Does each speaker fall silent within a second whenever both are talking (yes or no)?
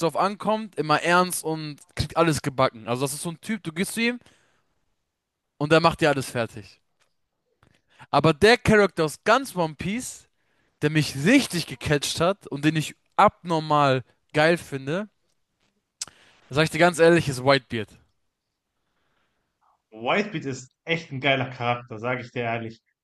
yes